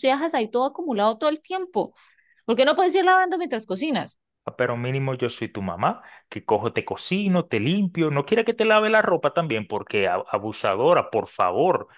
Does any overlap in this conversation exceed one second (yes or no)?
no